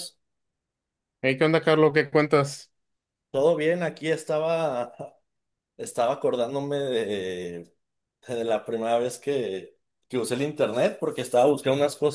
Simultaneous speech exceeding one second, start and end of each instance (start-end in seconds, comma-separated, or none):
none